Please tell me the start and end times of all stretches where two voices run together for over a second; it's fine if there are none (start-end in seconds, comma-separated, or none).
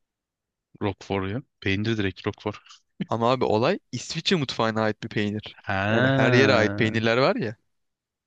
5.6-7.0